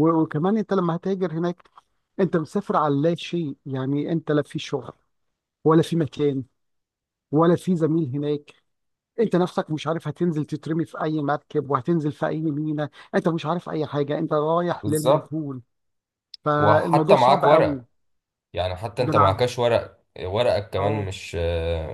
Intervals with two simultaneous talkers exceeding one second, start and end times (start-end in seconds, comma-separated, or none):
16.6-17.8